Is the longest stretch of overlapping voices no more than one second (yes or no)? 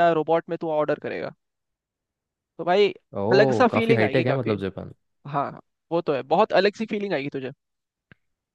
no